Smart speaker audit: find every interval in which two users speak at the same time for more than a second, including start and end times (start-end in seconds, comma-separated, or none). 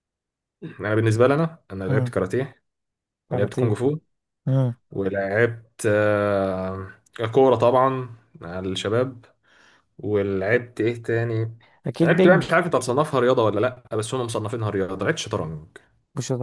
none